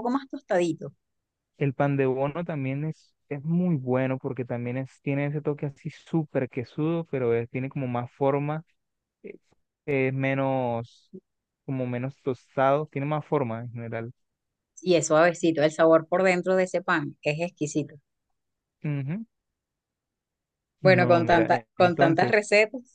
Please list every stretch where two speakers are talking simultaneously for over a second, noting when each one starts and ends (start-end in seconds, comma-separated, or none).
20.8-22.4